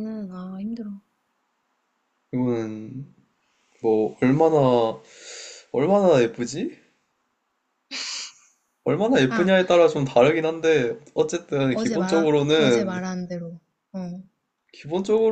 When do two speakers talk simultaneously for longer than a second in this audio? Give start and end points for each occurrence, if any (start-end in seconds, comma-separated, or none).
11.7-13.0